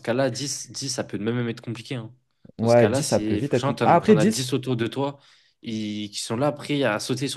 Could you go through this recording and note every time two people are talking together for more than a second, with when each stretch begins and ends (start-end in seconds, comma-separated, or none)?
2.6-4.5